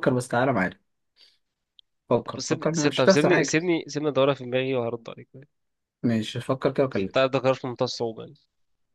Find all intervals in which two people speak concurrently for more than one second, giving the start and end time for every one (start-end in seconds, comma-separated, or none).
2.2-3.6